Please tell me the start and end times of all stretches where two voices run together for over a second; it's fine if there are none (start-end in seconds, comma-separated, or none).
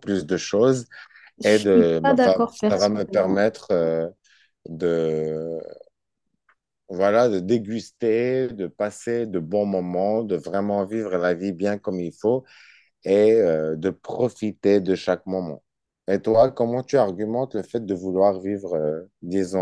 1.4-3.5